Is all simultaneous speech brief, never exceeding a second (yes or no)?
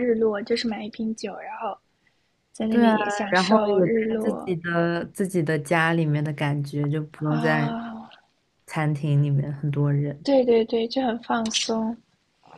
no